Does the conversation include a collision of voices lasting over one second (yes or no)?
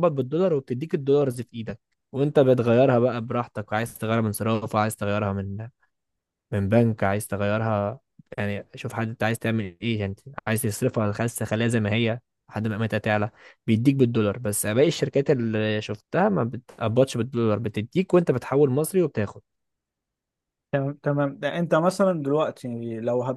no